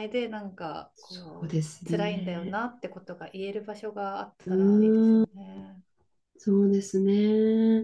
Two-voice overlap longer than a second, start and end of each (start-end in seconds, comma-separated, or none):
0.9-2.6